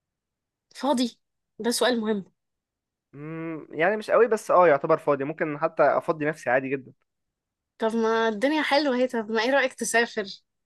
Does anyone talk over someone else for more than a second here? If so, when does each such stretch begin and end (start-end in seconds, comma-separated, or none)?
none